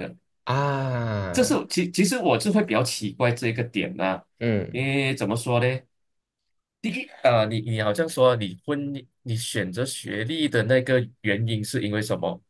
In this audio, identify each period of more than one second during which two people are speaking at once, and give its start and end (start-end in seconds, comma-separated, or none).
none